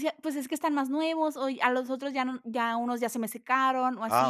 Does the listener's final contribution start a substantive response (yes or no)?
yes